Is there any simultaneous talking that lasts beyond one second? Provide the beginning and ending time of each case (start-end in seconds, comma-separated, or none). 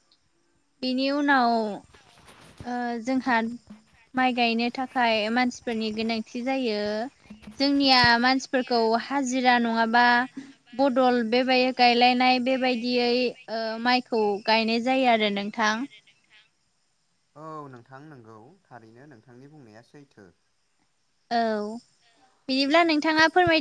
none